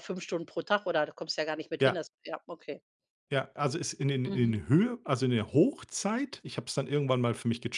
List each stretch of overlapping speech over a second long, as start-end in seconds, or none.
none